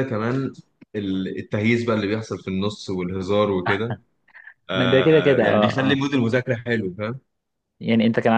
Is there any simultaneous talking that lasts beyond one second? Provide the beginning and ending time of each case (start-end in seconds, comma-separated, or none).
4.7-6.0